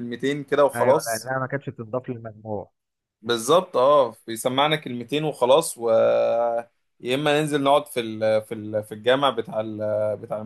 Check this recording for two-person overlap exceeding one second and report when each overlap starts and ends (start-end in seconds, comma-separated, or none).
none